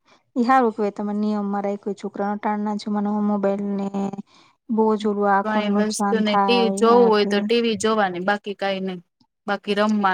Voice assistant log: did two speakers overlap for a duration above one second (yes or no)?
yes